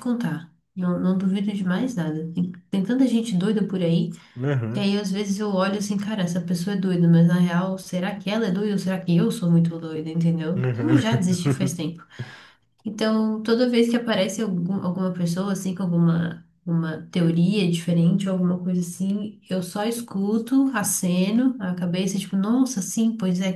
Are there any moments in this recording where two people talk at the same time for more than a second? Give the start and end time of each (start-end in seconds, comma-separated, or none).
10.5-11.9